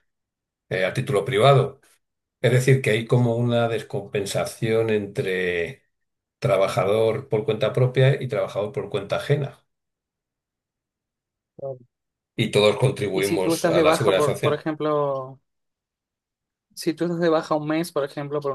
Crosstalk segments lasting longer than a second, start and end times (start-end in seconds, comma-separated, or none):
13.1-14.6